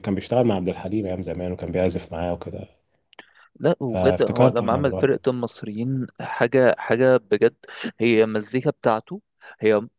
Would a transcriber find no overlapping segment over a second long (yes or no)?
no